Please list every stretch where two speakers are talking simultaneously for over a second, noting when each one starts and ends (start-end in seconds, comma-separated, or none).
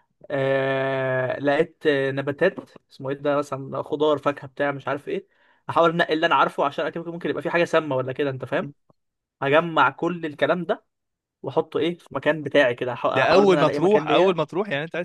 13.2-14.4